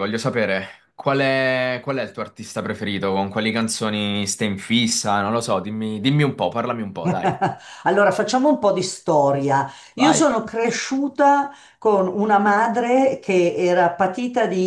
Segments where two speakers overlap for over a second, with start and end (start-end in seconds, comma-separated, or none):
none